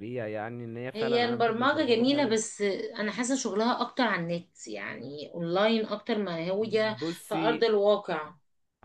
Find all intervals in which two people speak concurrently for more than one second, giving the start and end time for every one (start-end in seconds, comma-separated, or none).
0.9-2.4